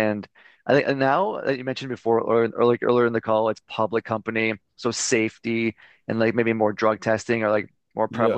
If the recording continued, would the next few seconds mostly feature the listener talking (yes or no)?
no